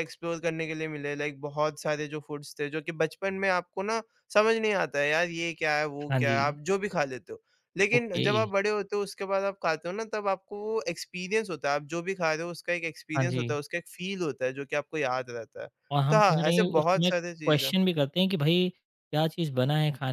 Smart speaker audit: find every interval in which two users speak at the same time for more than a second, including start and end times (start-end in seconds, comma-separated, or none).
16.1-17.8